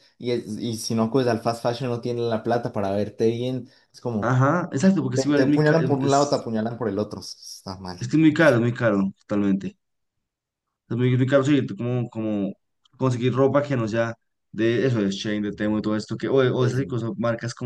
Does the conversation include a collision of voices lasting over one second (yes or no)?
yes